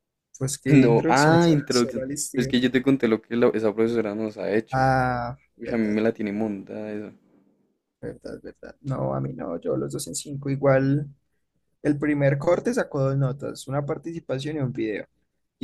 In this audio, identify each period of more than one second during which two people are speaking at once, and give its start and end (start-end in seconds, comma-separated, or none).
0.7-2.6